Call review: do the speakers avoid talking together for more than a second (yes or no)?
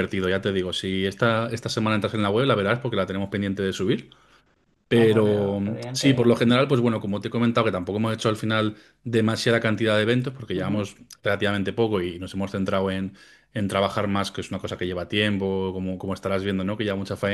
no